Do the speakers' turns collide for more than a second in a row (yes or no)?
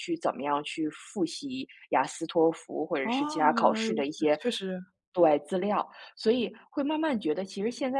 yes